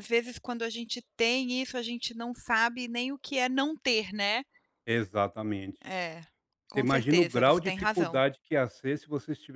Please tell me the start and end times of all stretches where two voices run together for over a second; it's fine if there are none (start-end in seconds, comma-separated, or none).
6.7-8.2